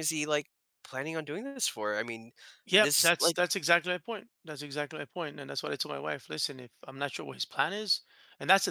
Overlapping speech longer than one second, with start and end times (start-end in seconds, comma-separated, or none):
none